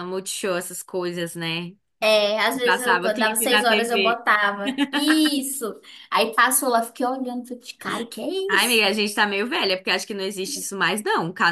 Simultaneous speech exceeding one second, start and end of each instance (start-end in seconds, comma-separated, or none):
2.6-4.2